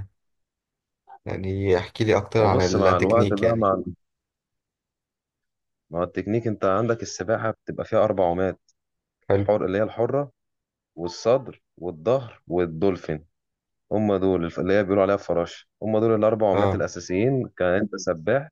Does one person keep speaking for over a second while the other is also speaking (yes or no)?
yes